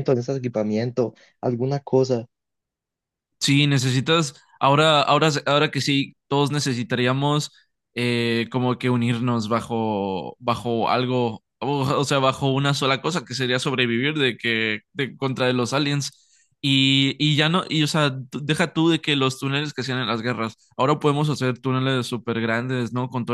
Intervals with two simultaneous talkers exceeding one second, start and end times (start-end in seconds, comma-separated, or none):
none